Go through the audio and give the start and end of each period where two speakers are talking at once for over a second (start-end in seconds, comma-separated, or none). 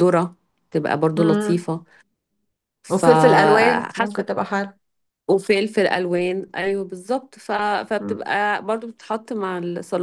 2.9-4.3